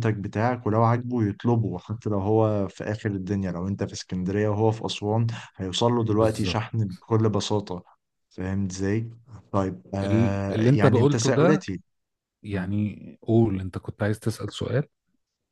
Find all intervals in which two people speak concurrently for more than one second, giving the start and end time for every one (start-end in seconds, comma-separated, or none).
10.0-11.7